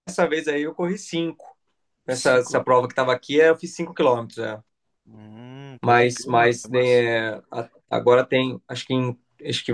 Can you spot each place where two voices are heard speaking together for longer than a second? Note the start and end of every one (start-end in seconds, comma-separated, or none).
5.8-7.0